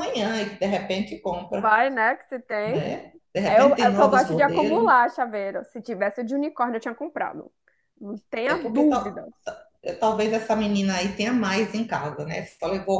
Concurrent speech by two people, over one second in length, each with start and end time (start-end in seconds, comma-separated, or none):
3.5-4.9